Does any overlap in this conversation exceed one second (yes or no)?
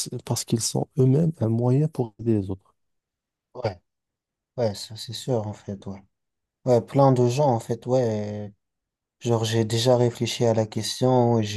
no